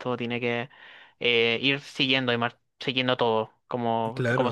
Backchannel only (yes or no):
no